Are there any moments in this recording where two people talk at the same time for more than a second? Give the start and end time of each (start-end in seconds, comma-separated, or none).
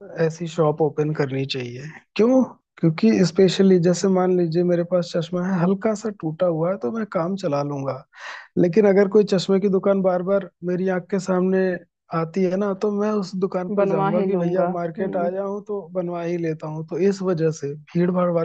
13.8-15.3